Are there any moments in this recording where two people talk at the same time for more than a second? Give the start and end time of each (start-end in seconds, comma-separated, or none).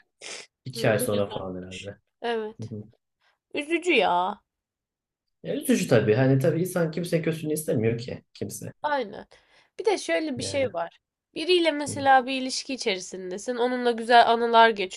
0.7-2.0